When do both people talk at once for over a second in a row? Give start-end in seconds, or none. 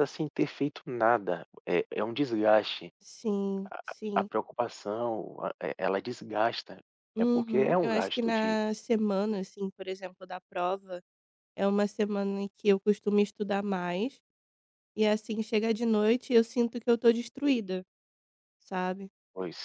7.2-8.6